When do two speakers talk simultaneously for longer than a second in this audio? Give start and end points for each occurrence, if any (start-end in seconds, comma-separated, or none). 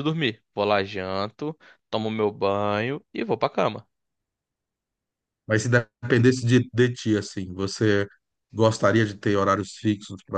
none